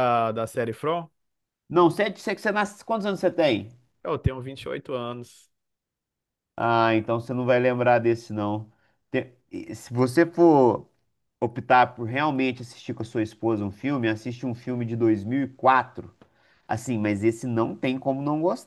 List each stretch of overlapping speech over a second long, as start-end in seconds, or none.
none